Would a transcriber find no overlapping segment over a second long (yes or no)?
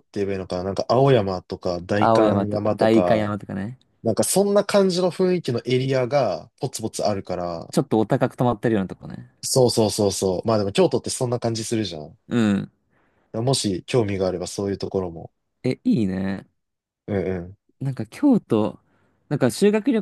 no